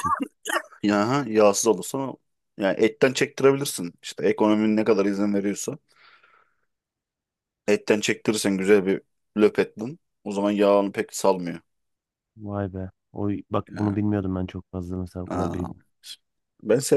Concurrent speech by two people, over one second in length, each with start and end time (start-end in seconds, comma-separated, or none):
none